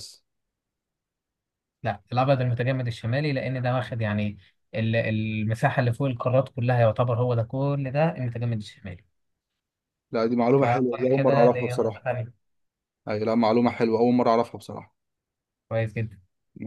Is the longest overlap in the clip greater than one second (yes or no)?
yes